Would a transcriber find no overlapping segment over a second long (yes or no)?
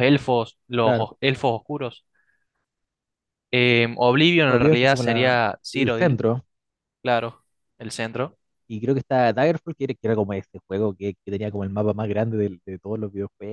no